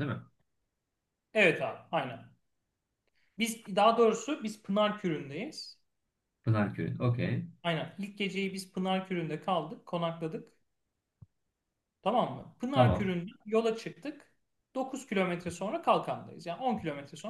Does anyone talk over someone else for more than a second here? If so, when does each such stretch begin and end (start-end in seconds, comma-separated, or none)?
none